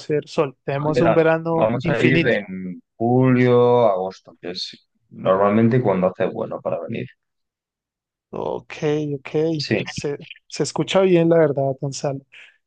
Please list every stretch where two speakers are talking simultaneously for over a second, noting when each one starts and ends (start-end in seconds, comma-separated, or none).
0.9-2.4